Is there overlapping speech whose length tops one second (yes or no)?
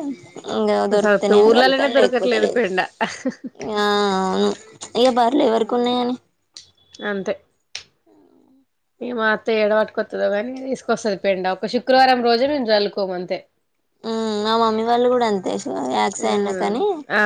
yes